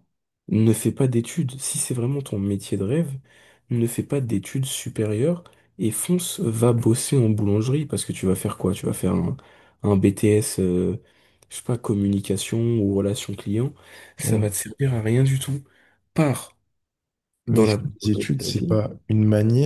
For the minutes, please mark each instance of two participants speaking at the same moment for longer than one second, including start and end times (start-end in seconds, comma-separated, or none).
17.5-18.8